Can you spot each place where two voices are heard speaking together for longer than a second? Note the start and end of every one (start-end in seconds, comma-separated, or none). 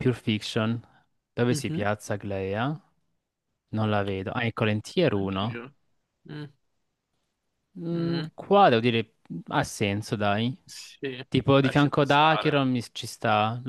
11.3-12.6